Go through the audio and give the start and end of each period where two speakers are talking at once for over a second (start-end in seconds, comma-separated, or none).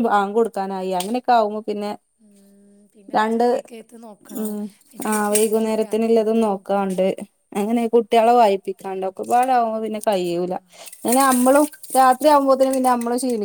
5.1-6.9